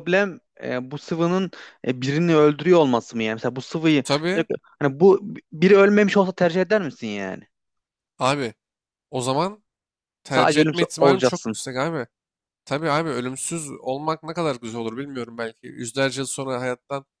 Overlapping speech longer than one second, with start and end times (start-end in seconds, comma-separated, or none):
10.3-11.6